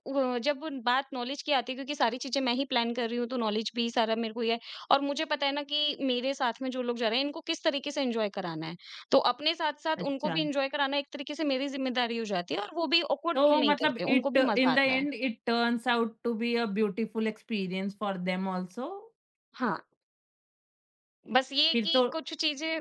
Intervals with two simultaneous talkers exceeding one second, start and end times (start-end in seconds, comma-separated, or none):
13.3-15.0